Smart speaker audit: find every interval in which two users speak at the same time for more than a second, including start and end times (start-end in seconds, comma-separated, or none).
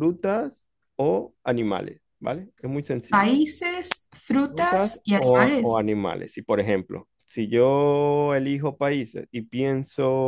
4.3-5.9